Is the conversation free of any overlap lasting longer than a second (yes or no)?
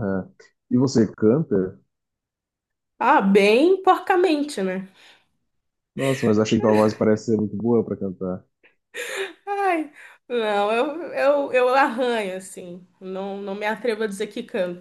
yes